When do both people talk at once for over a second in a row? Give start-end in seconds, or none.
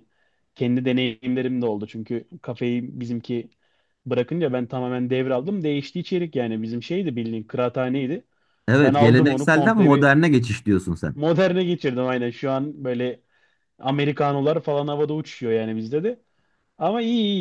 8.8-10.1